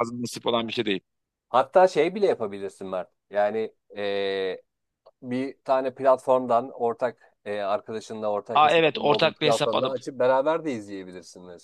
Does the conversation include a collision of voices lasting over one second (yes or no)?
yes